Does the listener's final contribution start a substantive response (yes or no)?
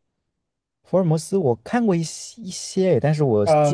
yes